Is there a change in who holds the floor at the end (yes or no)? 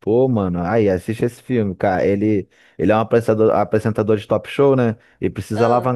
no